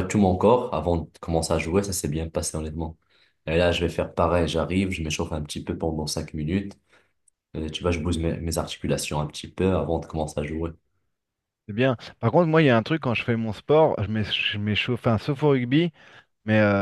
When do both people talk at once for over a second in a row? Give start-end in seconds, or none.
none